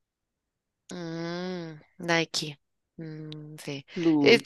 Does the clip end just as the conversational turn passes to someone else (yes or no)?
no